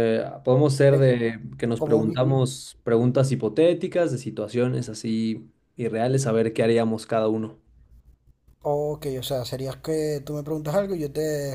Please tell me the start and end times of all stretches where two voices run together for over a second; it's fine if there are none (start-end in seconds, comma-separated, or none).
none